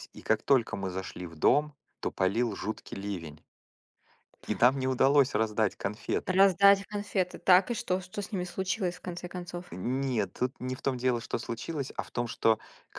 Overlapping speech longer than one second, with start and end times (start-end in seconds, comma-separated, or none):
none